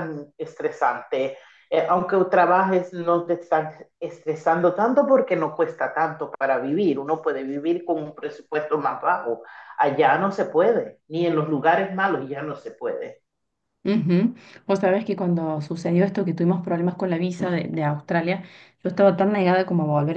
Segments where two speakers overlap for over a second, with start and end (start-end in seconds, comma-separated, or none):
none